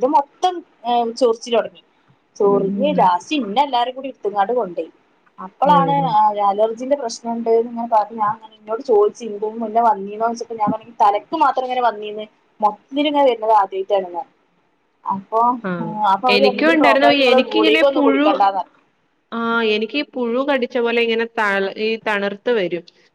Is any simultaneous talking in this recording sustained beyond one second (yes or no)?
yes